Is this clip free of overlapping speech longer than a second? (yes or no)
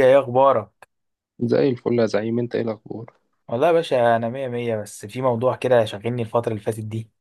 yes